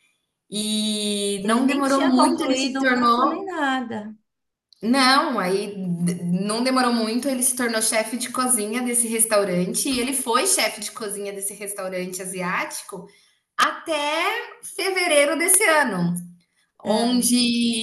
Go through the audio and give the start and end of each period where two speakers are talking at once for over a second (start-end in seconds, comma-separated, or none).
1.4-3.4